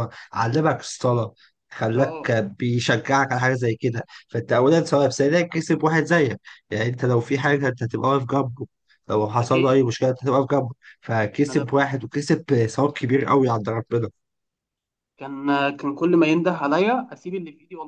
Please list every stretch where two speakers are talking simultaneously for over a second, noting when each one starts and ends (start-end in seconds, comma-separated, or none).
none